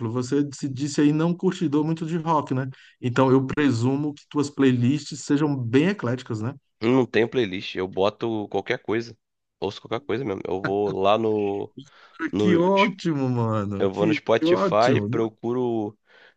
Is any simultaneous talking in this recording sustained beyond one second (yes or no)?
yes